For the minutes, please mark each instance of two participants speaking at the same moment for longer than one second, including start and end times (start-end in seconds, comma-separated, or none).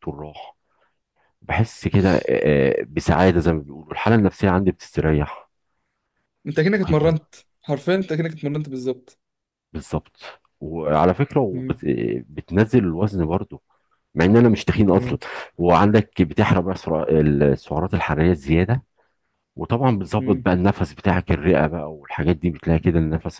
none